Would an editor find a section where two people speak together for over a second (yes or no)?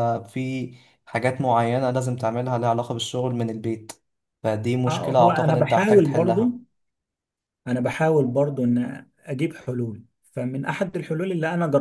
yes